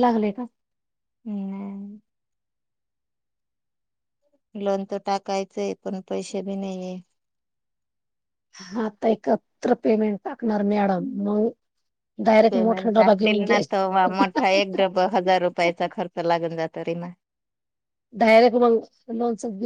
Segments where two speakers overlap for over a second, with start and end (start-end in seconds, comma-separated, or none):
12.5-14.8